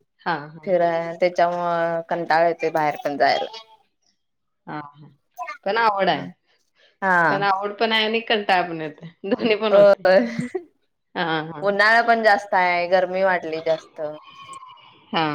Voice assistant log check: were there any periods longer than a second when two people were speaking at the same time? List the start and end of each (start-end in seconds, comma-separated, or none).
none